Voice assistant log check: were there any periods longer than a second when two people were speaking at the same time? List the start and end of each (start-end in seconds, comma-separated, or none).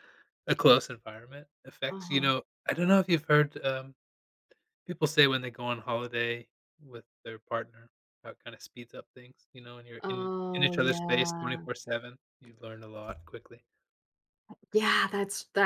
10.0-11.7